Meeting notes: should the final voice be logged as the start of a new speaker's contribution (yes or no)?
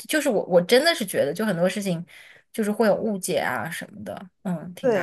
yes